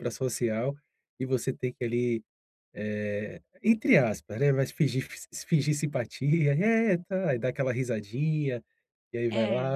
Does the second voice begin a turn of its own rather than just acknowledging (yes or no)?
no